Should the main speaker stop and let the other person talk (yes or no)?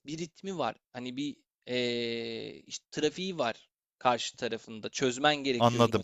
yes